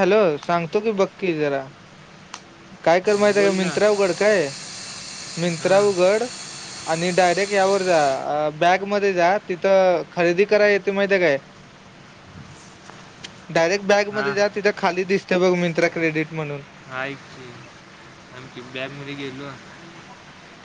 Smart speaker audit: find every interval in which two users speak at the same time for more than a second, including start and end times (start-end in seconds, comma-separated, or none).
none